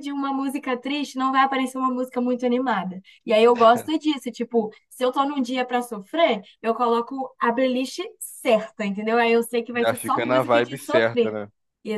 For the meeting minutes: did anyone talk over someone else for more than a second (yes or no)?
yes